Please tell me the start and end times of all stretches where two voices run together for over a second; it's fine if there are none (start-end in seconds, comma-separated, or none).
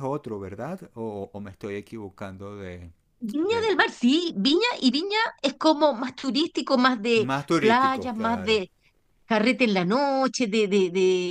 7.1-8.6